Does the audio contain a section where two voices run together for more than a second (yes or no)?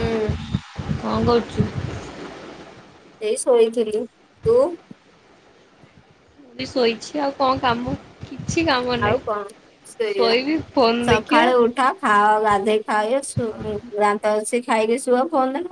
no